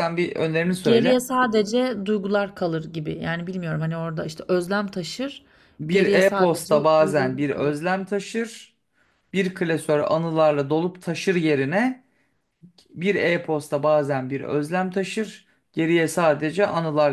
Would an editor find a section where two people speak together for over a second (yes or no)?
yes